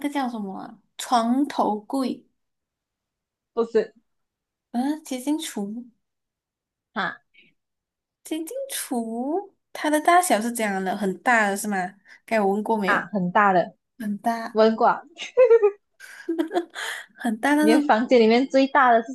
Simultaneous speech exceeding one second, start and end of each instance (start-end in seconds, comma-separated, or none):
none